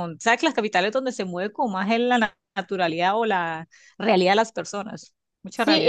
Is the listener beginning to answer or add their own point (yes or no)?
yes